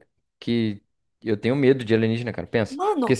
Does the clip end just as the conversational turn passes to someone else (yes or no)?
no